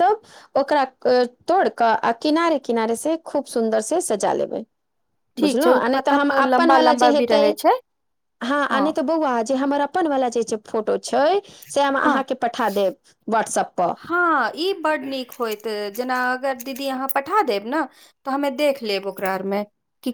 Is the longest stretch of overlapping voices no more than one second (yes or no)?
no